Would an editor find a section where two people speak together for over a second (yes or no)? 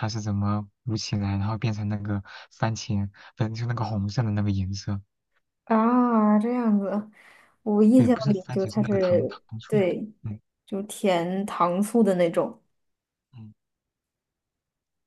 yes